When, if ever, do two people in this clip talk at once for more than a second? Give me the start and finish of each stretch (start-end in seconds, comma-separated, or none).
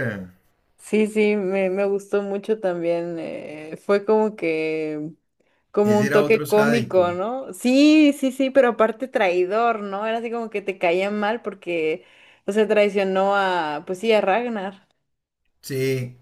5.8-7.1